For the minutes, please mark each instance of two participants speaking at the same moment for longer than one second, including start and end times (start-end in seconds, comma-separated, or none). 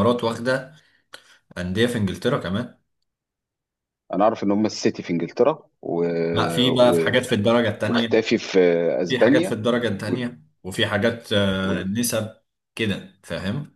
none